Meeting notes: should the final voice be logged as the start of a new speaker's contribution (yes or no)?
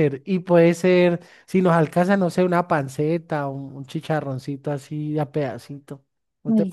yes